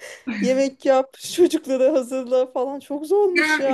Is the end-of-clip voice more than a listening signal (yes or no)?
yes